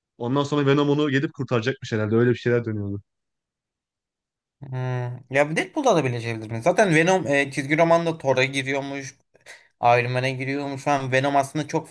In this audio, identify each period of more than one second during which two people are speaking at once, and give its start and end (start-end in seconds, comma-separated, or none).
none